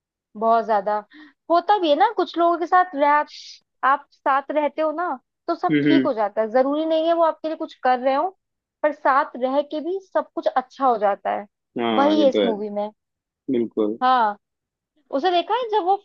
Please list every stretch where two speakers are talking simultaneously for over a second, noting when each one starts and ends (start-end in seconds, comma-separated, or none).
none